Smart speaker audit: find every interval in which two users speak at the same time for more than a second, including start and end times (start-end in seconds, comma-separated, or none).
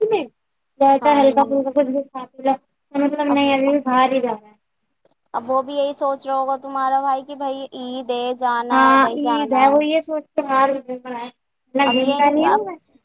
none